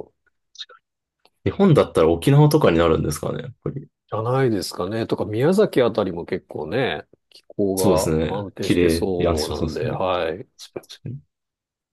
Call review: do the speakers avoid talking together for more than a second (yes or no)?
no